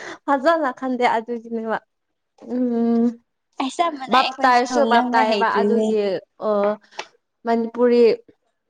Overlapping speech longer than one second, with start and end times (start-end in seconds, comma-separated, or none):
4.1-5.9